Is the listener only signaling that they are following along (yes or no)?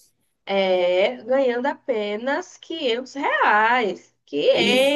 no